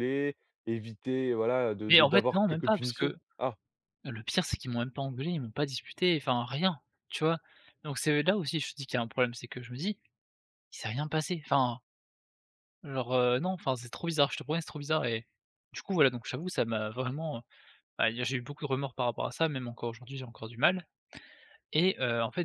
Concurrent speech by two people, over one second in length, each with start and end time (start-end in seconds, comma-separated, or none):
1.9-3.2